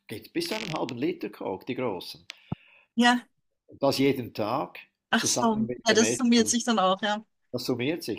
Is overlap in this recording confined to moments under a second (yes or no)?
no